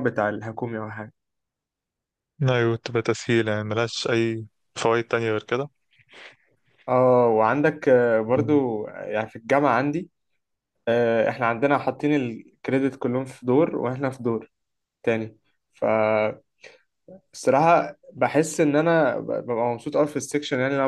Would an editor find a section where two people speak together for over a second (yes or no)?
no